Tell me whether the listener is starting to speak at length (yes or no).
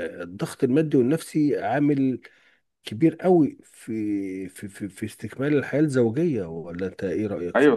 yes